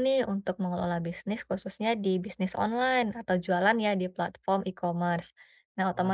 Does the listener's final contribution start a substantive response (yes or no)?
no